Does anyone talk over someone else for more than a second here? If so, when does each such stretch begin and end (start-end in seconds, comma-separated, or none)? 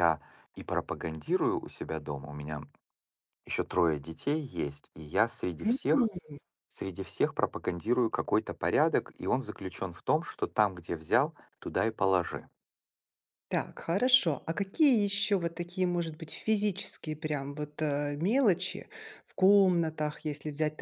none